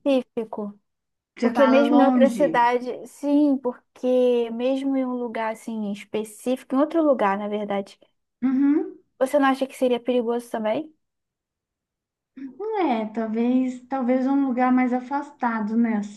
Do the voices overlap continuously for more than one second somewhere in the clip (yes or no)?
yes